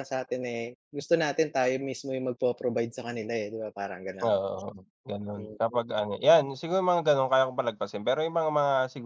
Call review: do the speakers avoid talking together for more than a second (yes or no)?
yes